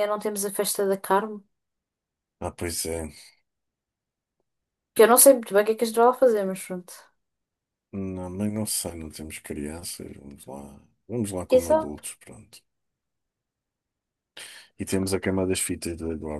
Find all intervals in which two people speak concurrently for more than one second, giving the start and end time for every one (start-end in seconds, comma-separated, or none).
none